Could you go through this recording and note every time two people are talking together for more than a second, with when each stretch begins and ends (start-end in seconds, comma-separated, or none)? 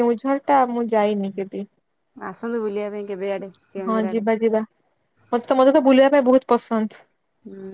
none